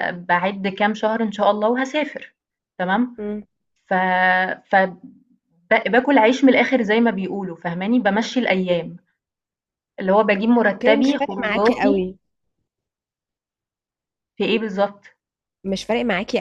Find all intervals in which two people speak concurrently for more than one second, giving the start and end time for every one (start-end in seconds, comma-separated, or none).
10.7-12.1